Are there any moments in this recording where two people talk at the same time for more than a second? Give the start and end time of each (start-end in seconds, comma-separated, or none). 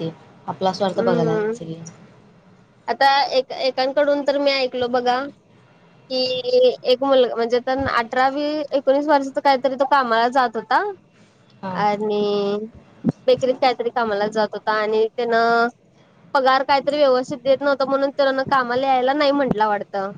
none